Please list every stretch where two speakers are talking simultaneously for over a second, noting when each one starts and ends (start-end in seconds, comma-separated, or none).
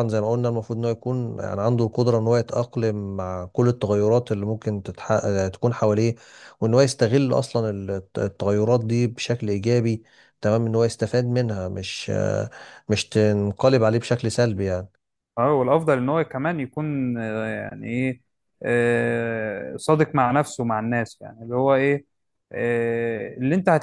none